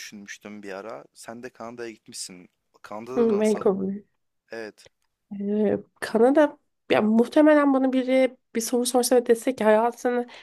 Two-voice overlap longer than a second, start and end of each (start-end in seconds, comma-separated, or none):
none